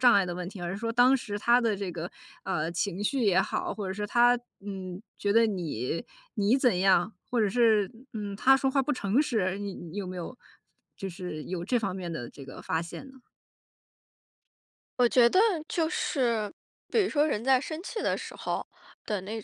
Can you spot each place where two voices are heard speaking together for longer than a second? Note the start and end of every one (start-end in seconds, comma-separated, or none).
none